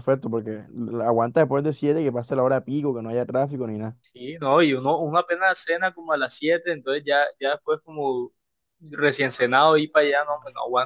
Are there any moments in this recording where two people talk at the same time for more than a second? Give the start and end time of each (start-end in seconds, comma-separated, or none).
none